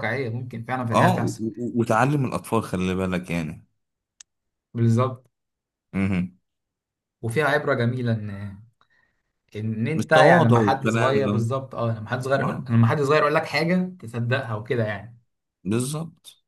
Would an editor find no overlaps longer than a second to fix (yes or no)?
no